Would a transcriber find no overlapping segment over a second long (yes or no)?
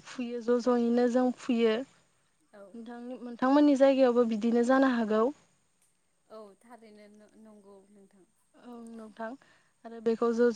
yes